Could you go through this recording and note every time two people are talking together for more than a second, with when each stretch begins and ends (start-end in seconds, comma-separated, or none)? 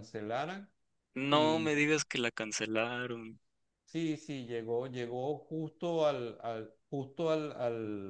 none